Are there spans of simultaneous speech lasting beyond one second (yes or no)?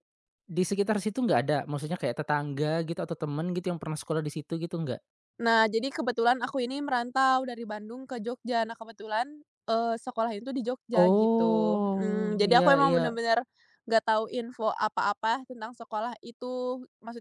yes